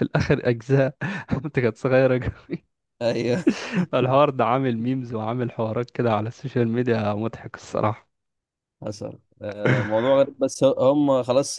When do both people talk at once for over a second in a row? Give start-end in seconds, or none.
none